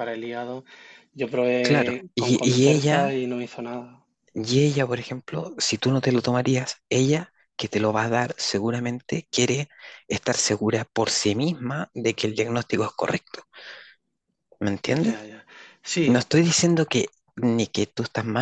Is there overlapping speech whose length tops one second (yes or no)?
yes